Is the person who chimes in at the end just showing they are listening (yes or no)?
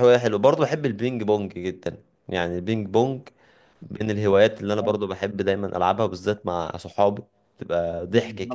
no